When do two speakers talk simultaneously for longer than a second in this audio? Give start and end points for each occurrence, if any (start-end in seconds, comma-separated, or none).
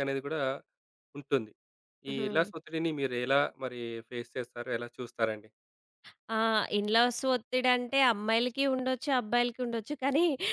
none